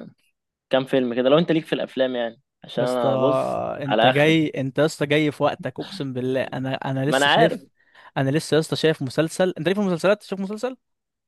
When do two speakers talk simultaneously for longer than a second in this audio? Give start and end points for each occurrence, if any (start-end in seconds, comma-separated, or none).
none